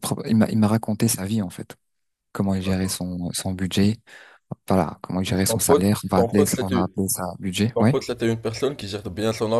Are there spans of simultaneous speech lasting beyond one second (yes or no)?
yes